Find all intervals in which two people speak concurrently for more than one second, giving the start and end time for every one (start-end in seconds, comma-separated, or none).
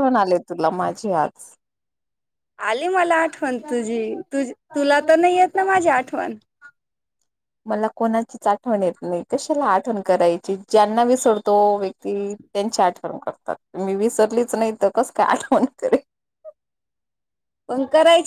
none